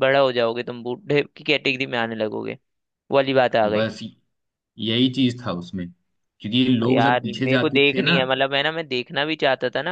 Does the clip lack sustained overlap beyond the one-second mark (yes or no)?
no